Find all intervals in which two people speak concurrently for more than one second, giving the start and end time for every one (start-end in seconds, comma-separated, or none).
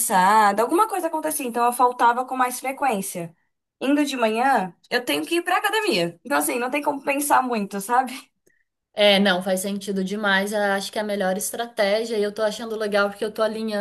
none